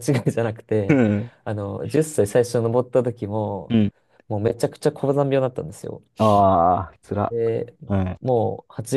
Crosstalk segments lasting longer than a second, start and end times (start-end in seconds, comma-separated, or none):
none